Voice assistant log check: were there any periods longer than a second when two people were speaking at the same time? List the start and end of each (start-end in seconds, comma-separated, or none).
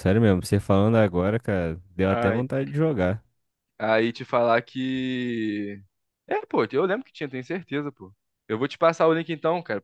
none